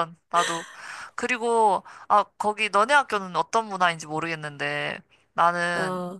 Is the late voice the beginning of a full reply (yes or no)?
no